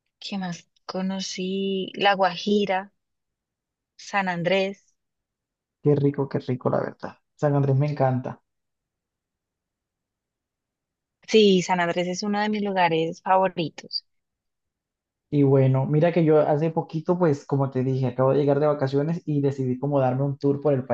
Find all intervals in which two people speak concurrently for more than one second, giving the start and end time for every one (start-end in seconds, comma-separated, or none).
none